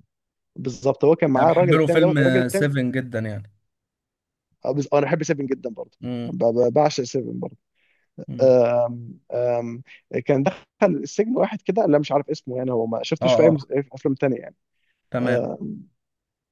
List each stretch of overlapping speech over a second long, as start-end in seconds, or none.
1.4-2.7